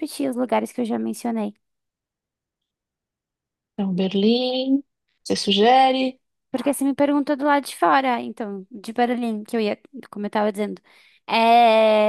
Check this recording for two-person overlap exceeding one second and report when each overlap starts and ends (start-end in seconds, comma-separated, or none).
none